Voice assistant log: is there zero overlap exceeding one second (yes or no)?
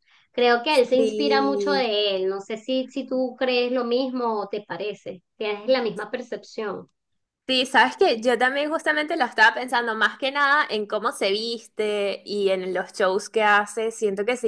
no